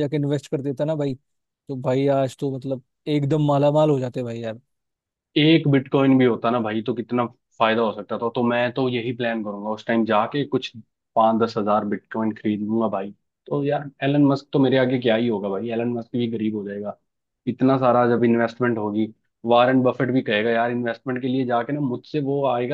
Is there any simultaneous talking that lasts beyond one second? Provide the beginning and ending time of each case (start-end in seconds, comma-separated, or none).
none